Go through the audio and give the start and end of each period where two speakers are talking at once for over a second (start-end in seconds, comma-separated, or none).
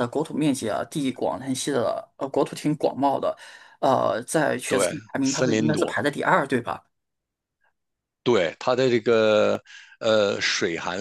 4.7-6.0